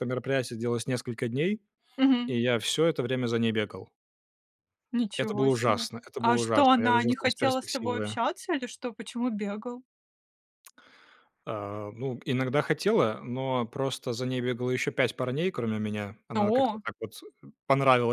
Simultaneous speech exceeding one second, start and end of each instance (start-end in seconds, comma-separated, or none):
5.2-8.2